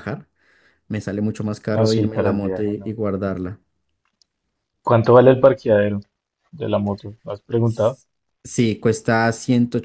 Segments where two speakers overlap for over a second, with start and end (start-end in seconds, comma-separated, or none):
1.7-3.0